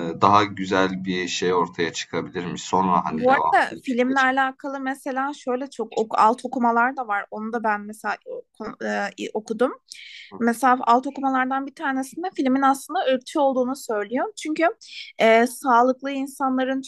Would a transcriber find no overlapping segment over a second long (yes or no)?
no